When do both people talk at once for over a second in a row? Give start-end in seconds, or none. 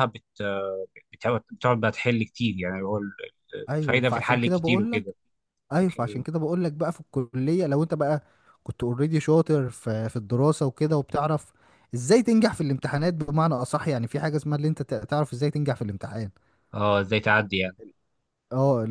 3.8-5.0